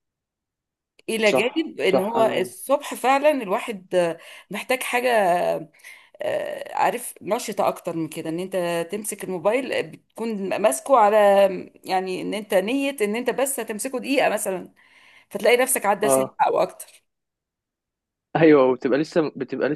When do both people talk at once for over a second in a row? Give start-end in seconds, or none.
1.3-2.5